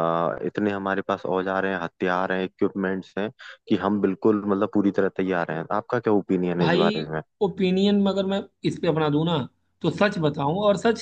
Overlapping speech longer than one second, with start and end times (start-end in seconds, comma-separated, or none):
none